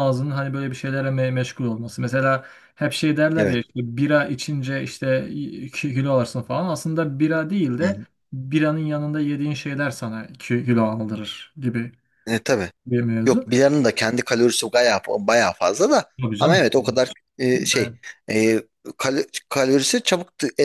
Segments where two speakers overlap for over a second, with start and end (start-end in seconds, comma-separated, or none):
none